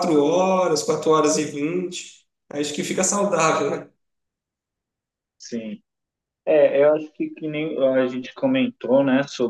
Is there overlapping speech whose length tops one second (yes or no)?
no